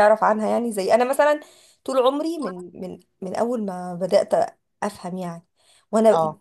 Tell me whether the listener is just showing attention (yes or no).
yes